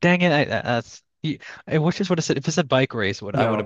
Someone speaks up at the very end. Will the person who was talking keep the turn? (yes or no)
no